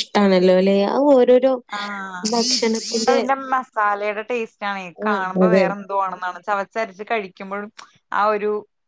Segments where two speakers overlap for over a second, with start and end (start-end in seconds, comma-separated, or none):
none